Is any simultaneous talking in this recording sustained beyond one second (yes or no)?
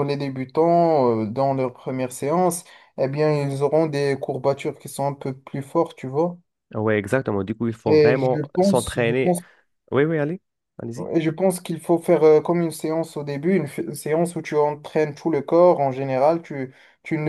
yes